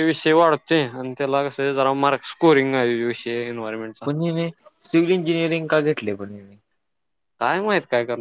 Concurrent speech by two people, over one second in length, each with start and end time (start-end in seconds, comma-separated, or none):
none